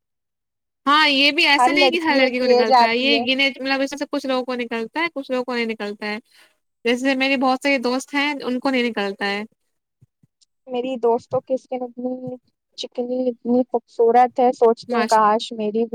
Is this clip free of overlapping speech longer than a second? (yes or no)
no